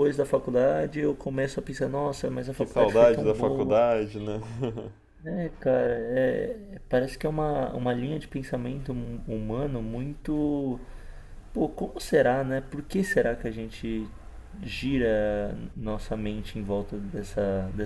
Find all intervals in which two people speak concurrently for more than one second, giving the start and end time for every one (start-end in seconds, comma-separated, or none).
2.5-3.8